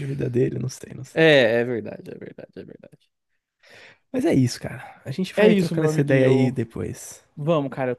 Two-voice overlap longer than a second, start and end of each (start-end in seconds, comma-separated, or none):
5.3-6.6